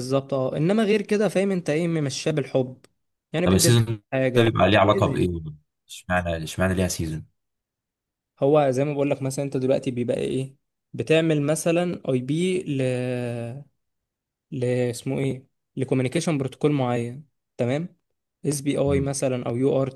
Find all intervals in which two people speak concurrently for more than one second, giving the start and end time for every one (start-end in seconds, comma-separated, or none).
3.4-5.3